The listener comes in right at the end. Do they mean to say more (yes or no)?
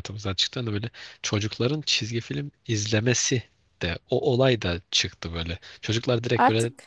no